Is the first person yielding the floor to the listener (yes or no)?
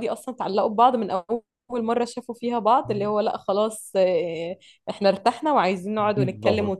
yes